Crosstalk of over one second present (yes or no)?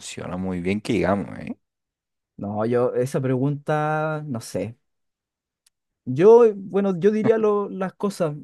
no